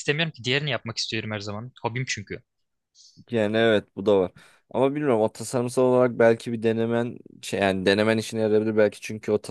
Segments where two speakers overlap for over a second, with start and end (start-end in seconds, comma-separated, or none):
none